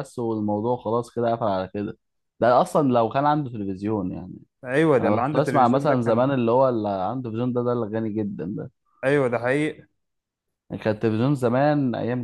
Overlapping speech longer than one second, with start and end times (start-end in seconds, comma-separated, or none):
5.0-6.3